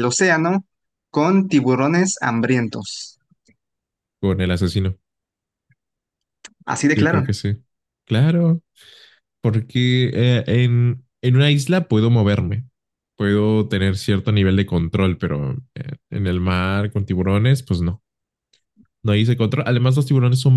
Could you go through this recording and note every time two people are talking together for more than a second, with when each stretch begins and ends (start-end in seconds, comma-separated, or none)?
none